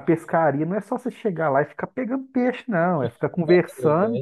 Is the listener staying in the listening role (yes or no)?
yes